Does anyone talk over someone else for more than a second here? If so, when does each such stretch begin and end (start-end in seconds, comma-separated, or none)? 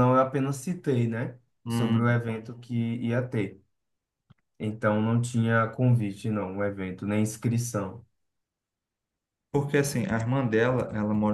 none